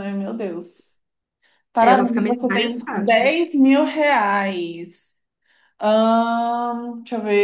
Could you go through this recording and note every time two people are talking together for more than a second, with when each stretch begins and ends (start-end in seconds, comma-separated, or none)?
1.8-3.4